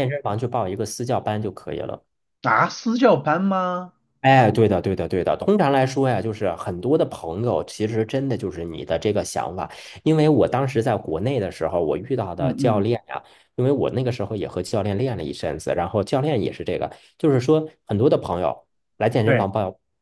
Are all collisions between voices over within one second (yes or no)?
yes